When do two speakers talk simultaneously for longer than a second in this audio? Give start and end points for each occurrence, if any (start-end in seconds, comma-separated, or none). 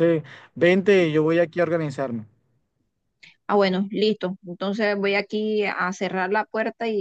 none